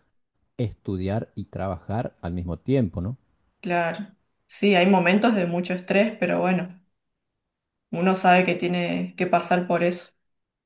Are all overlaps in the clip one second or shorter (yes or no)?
yes